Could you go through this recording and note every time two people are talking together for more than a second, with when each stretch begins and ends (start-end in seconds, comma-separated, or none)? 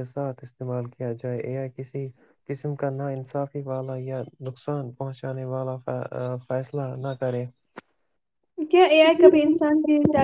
none